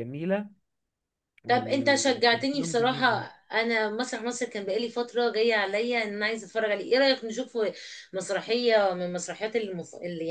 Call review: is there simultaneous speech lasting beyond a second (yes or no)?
yes